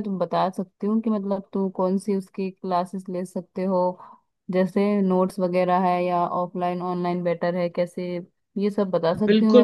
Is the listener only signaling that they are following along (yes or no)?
no